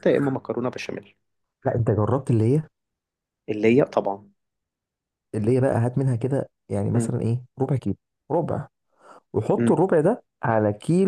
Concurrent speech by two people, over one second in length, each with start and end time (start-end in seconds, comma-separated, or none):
none